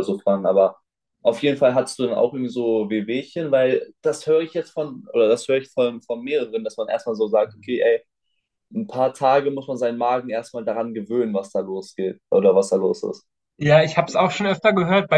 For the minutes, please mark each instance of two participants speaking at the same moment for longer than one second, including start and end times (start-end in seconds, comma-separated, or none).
none